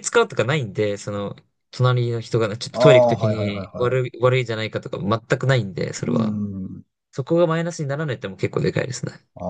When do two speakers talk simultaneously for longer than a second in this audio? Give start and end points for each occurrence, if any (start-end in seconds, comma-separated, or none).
2.7-4.0